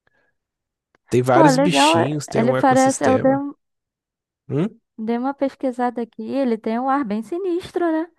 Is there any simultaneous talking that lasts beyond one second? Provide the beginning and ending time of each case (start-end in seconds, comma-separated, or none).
1.3-3.4